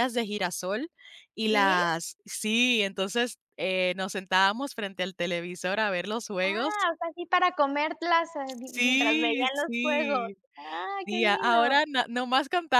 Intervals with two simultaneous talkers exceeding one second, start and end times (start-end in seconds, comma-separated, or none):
8.5-10.4